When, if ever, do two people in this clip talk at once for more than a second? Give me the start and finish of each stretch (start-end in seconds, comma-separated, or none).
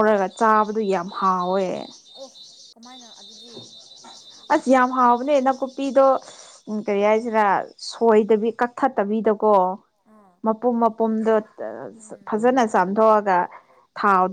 none